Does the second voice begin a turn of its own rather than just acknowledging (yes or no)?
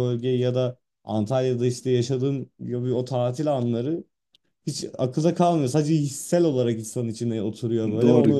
yes